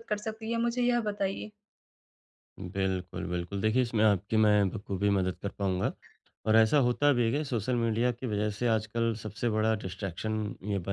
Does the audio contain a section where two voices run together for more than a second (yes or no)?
no